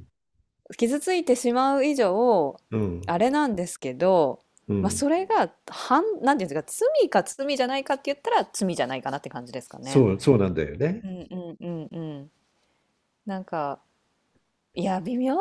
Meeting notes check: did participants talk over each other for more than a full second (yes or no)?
no